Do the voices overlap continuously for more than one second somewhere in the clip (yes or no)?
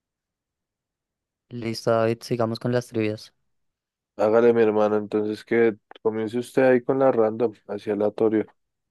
no